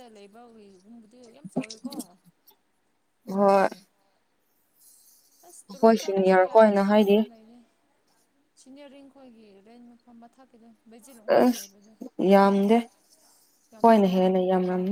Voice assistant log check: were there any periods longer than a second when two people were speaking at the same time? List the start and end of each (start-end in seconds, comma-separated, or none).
5.6-7.2